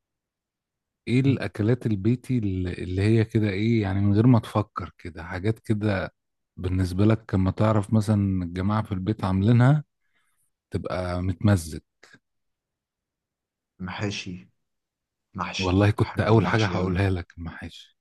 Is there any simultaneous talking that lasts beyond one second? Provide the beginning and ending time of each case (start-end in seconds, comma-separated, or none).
15.6-17.0